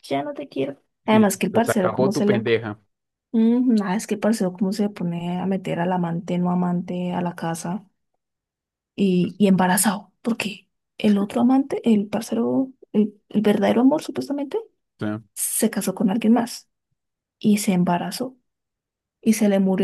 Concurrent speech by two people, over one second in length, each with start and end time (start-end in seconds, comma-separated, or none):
1.1-2.4